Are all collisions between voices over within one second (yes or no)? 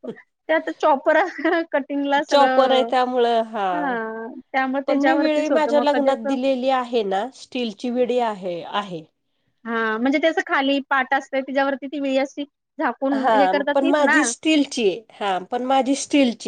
no